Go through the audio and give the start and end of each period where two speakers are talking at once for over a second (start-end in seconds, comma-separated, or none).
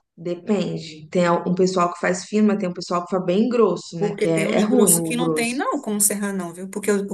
4.0-5.5